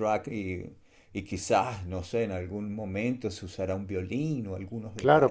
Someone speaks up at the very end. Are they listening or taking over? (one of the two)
taking over